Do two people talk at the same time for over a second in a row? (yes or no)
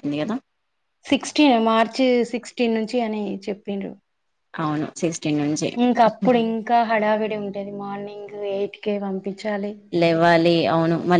no